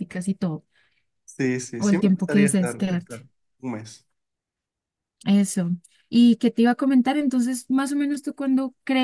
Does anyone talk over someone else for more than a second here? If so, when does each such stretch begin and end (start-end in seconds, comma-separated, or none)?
1.8-3.2